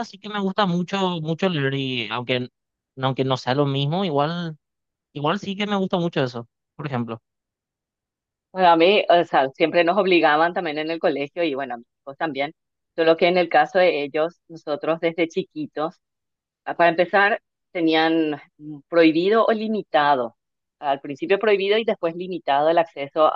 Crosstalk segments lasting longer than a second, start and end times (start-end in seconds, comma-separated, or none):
none